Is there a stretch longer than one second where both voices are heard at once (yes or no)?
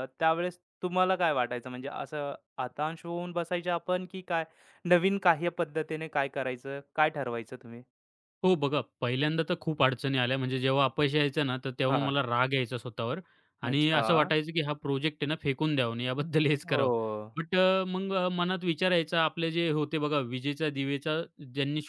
no